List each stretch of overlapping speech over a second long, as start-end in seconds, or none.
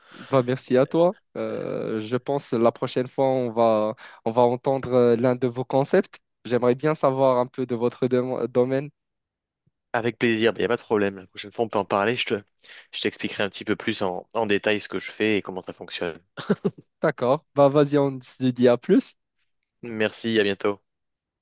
none